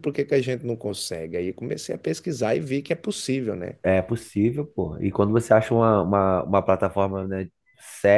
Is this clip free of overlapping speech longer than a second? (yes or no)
yes